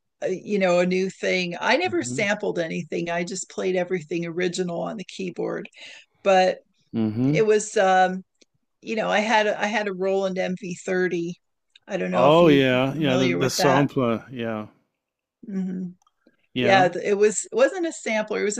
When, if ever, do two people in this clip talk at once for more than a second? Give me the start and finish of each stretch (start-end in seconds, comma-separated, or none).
12.1-13.9